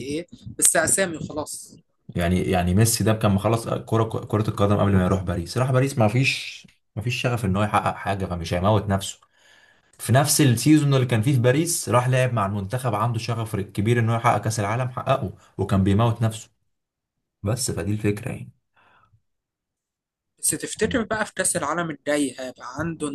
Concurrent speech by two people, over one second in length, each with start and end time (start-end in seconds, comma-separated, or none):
none